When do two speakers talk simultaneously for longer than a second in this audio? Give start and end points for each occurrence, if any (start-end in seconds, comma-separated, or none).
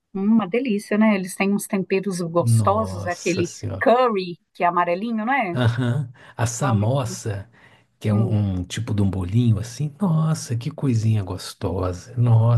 2.4-3.9